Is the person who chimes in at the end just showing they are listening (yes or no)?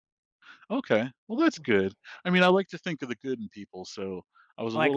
no